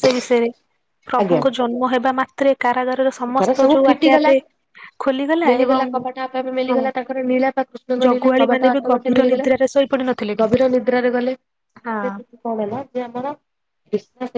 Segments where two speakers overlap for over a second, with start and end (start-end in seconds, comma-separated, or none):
8.1-9.5